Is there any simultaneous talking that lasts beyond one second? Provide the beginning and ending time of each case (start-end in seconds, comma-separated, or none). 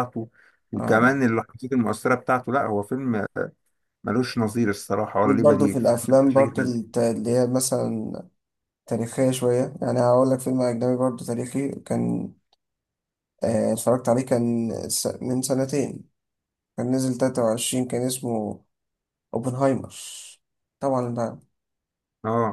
5.2-6.7